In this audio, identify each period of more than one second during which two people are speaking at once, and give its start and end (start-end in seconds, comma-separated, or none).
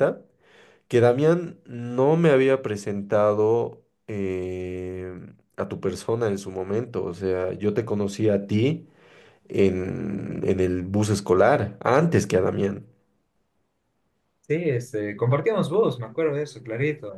none